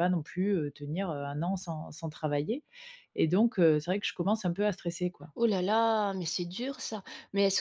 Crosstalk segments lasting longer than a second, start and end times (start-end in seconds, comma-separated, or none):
none